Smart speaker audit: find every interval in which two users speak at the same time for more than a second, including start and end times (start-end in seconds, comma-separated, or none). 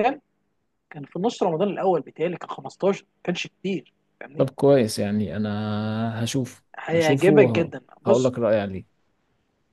6.8-8.3